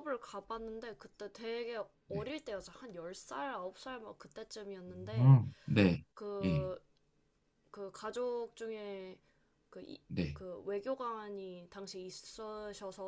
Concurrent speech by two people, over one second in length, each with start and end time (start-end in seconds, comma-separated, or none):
none